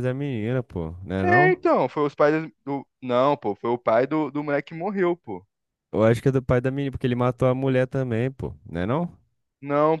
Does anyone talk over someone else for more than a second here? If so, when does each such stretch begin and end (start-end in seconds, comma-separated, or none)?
none